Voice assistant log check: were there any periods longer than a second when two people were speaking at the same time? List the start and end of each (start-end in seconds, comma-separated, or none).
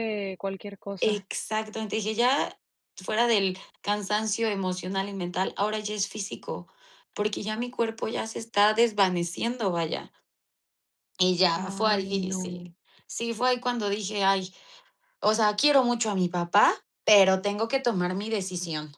11.5-12.7